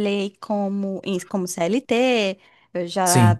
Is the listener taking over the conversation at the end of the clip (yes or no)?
no